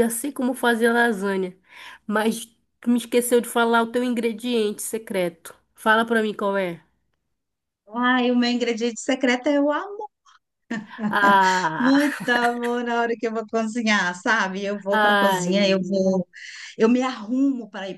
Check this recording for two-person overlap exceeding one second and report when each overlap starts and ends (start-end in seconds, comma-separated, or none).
14.9-16.2